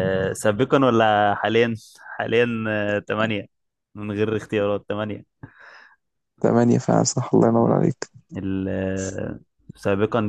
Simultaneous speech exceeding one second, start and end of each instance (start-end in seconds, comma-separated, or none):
none